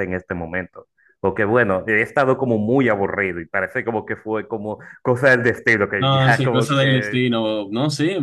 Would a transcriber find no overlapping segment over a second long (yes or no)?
no